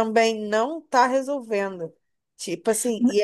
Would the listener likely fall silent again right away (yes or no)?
yes